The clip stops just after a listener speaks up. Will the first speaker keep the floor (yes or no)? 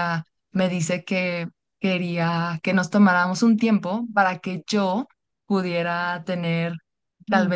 yes